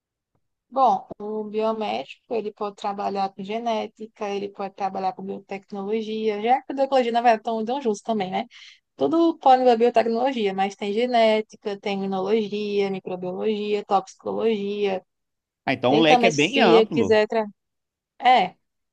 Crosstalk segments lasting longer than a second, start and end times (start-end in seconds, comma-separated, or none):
15.8-17.2